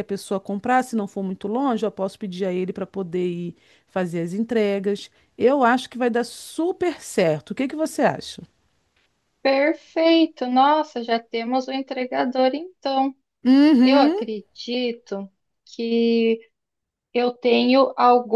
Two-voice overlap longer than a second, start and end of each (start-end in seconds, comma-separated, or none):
none